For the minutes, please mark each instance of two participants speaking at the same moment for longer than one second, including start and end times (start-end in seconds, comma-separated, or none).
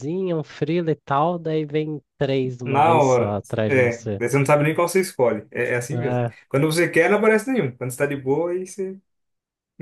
2.6-4.2